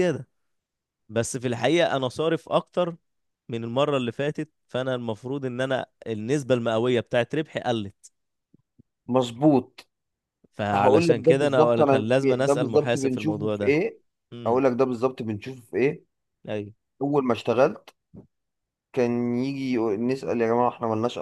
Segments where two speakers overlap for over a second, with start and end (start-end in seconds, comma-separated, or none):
10.7-13.8